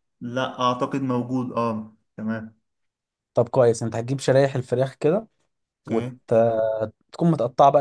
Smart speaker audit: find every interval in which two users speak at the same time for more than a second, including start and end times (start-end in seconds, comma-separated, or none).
none